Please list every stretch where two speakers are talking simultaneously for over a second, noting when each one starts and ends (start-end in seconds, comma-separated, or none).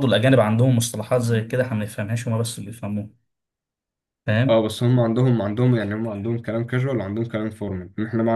none